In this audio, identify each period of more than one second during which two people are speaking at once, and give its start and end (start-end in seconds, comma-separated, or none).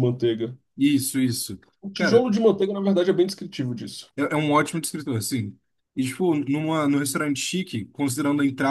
none